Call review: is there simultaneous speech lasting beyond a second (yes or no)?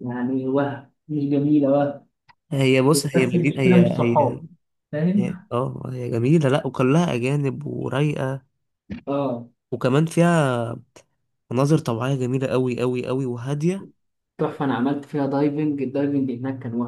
yes